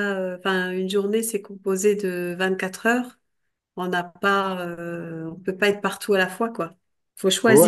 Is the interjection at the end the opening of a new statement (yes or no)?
yes